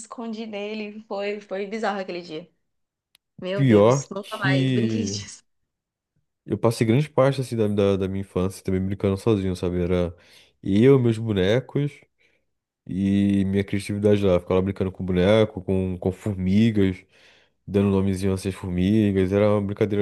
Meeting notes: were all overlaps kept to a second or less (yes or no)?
no